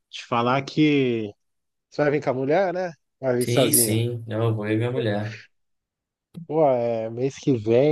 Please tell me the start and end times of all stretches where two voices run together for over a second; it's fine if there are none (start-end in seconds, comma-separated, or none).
none